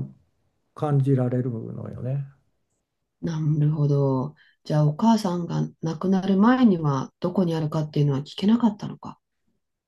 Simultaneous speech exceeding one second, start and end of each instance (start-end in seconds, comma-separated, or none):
none